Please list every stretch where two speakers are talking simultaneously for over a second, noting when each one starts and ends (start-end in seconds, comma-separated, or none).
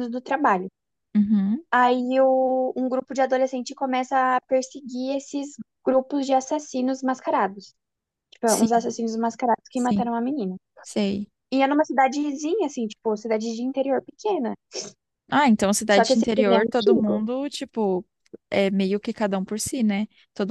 15.9-17.2